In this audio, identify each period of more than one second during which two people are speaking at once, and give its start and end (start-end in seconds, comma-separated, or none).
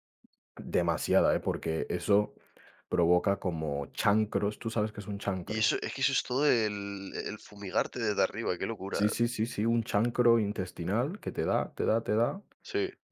none